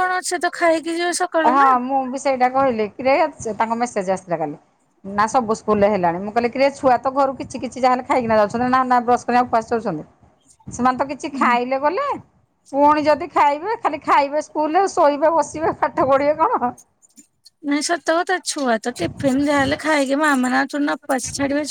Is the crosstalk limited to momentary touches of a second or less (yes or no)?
yes